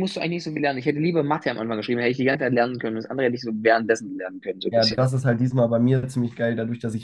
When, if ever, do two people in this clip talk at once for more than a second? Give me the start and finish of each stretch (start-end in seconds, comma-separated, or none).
none